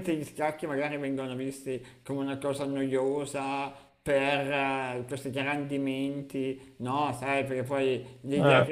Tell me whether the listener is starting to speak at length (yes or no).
no